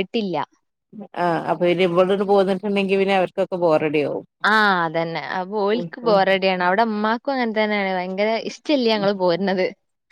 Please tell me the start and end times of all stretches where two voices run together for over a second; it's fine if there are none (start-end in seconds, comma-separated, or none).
none